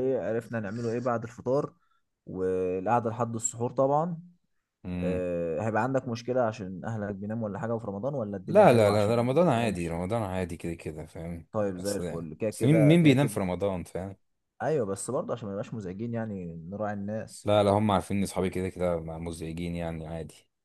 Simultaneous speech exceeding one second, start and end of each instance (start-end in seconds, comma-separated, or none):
8.5-10.0, 11.5-13.4